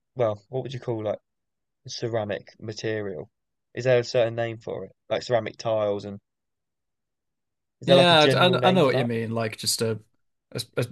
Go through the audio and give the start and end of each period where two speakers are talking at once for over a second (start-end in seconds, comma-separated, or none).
7.8-9.1